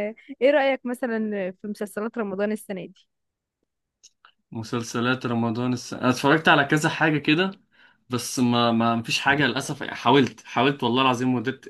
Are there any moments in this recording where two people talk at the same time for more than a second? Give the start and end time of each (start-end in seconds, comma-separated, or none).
none